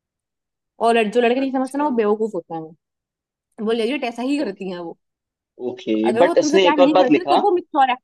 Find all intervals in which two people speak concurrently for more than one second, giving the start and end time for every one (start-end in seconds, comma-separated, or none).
6.0-7.4